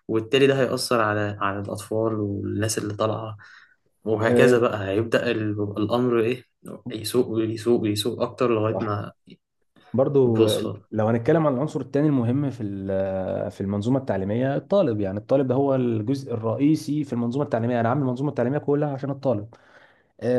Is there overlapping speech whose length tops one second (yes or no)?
no